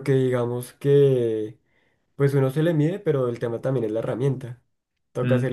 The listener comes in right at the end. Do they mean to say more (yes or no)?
no